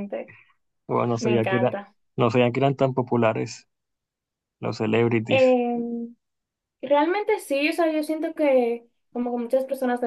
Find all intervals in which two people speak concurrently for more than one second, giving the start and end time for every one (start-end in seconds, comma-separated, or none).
none